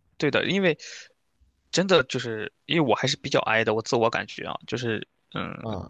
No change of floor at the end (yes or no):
yes